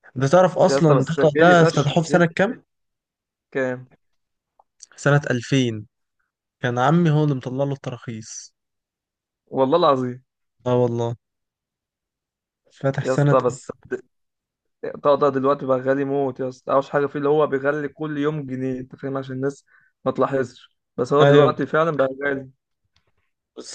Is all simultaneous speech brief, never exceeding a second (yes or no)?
no